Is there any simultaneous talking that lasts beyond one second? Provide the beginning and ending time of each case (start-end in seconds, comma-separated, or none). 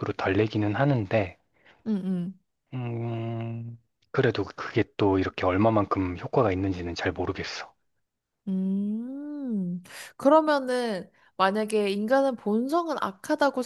none